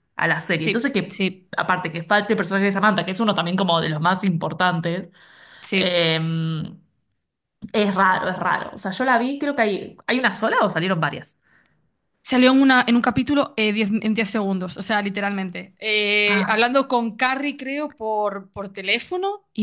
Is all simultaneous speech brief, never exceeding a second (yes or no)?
yes